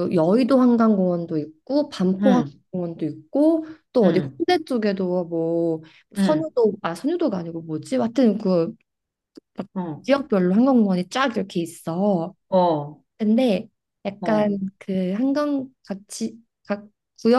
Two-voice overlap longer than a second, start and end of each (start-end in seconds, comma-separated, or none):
none